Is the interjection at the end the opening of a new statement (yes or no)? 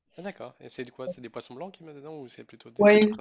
yes